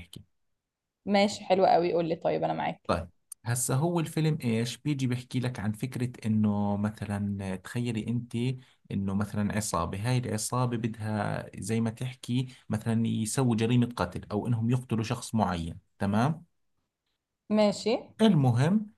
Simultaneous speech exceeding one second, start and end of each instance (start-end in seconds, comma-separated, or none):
none